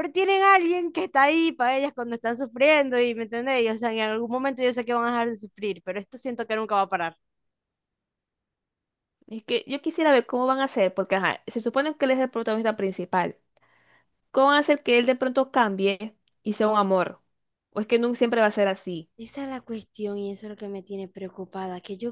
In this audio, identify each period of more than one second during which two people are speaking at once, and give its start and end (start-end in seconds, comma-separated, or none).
none